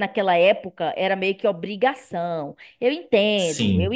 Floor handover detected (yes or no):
no